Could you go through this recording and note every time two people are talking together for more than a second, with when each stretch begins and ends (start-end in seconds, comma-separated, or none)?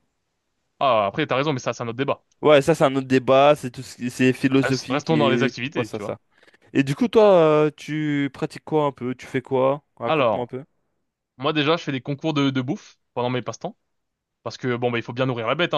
4.6-6.2